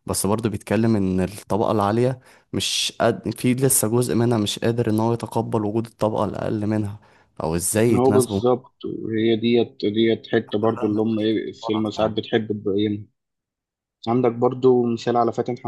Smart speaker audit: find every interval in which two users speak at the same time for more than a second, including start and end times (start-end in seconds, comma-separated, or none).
10.6-12.2